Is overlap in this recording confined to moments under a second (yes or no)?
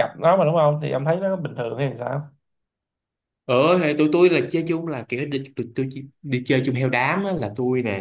yes